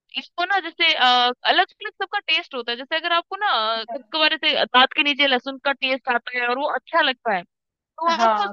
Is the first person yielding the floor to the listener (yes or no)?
no